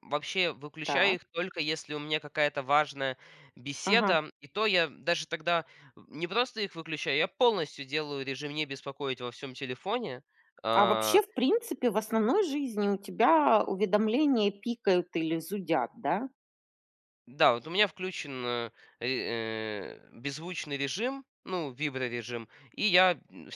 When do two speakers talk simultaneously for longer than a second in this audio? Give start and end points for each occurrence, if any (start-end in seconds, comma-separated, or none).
none